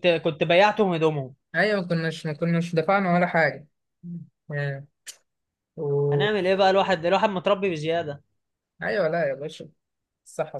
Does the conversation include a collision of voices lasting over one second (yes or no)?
no